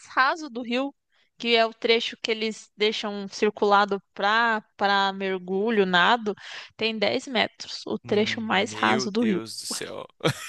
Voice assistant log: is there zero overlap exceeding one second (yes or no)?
no